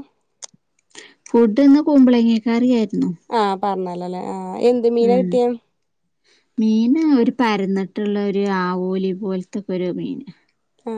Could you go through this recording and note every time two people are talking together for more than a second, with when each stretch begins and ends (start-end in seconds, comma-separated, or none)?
none